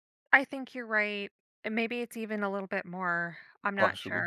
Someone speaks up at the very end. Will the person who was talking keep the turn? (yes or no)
no